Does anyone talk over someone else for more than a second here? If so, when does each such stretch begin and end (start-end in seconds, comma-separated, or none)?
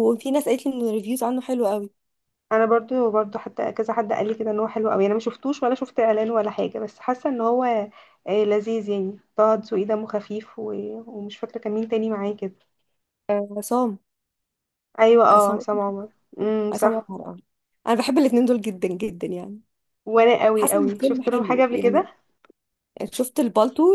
20.5-22.0